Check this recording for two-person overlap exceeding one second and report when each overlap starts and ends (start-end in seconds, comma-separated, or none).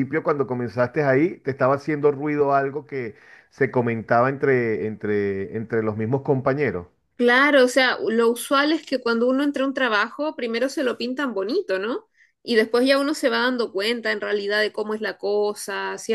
none